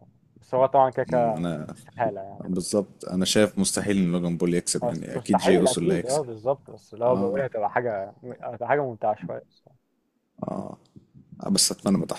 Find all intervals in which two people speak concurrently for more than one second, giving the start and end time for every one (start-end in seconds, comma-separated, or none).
4.8-6.2